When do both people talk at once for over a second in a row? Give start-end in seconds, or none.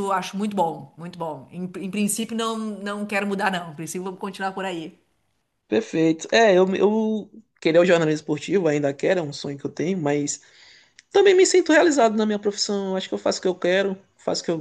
none